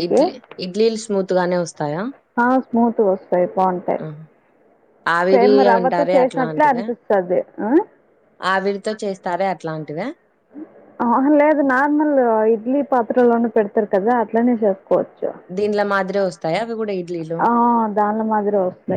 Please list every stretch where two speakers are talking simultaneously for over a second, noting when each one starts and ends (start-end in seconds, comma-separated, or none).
5.3-6.8